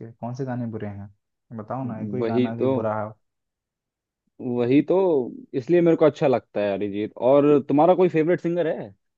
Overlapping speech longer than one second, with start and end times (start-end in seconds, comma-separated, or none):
none